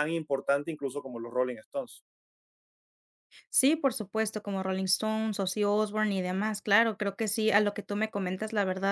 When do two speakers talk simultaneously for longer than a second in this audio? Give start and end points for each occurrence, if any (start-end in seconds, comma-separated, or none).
none